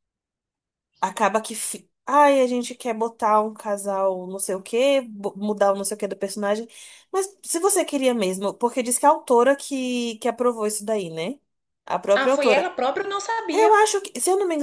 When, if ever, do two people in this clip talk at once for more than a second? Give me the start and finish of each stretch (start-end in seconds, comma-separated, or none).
none